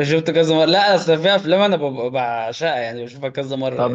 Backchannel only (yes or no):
no